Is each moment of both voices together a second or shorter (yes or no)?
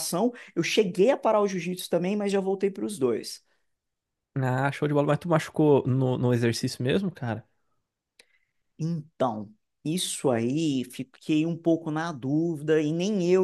yes